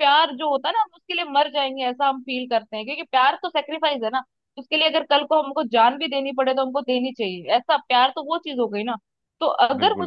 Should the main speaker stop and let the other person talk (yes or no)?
no